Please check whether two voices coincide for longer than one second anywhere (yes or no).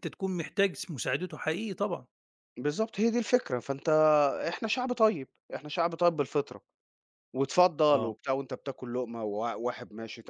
no